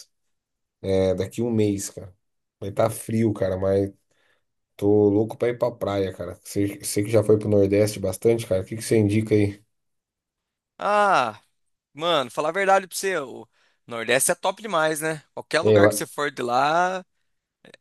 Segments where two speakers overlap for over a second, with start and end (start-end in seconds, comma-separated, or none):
none